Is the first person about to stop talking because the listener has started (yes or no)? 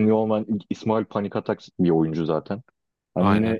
no